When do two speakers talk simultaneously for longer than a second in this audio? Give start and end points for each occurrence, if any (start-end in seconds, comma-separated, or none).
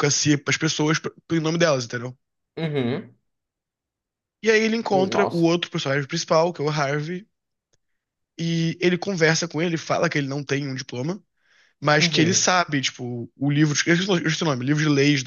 none